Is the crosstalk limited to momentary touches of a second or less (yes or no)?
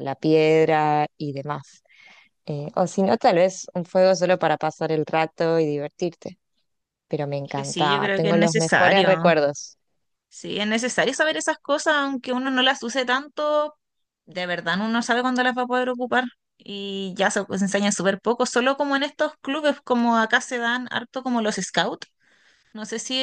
no